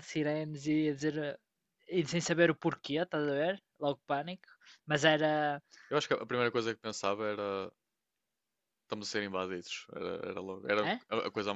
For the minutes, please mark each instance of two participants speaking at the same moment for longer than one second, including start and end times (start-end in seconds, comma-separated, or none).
none